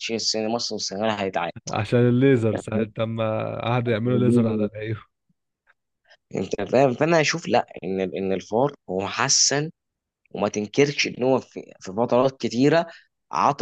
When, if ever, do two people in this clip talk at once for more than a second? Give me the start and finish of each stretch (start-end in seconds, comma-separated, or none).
none